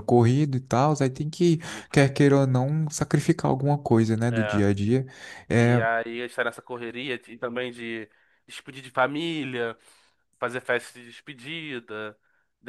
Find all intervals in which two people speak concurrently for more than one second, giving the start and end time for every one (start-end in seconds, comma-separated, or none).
none